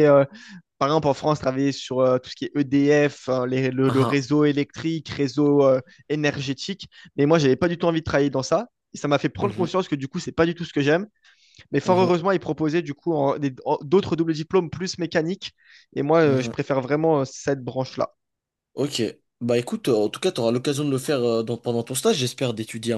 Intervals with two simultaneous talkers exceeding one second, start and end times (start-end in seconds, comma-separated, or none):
none